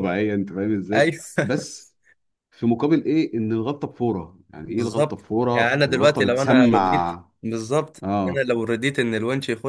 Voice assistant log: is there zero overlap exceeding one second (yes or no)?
no